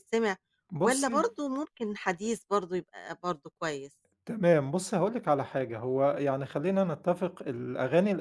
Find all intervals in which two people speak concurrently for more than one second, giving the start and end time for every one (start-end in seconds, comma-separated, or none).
none